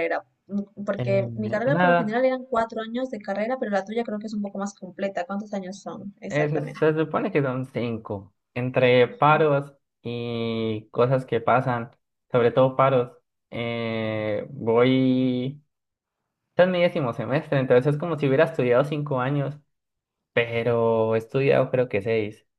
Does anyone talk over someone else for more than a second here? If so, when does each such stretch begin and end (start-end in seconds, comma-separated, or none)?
1.0-2.2